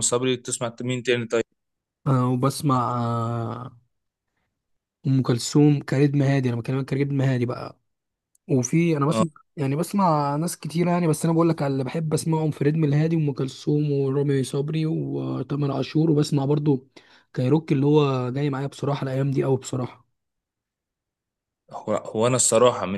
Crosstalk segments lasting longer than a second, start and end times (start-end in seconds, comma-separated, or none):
none